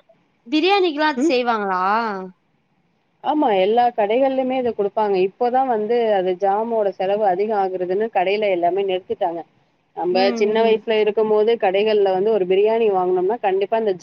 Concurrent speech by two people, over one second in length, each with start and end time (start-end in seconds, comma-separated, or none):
none